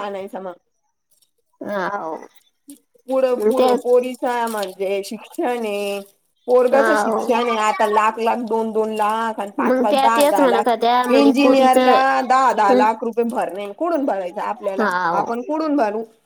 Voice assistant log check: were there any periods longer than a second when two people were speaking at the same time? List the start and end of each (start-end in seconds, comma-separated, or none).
9.7-11.8